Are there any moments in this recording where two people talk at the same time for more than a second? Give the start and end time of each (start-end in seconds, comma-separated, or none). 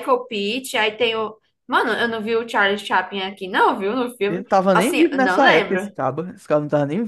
4.2-5.9